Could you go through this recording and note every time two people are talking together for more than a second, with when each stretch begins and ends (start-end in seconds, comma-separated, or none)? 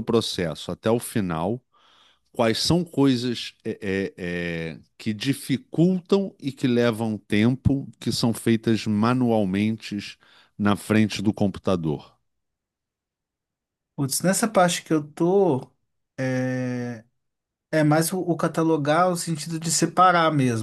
none